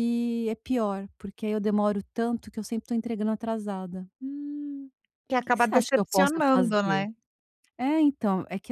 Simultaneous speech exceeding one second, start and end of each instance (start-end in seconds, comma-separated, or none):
5.3-7.0